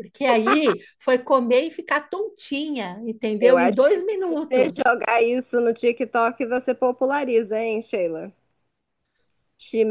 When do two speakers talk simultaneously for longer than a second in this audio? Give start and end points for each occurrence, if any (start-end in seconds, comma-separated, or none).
3.4-4.9